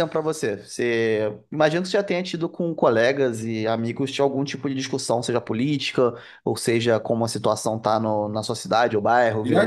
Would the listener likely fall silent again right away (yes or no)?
no